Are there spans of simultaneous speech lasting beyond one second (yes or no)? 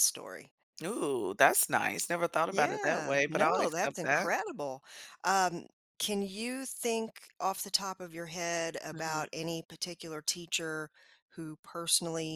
yes